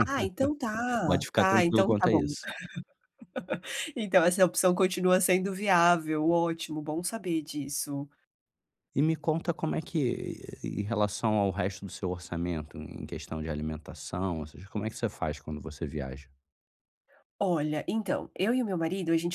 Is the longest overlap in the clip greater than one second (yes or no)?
yes